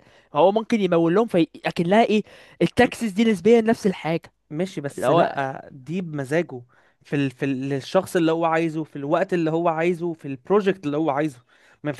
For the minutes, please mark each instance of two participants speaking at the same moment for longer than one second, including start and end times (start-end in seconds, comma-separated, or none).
none